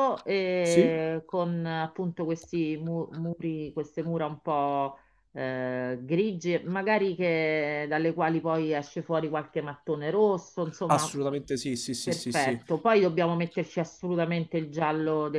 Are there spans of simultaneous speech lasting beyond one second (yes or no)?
no